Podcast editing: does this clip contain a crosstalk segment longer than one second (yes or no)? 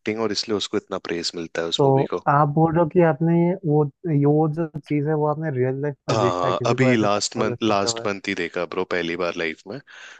yes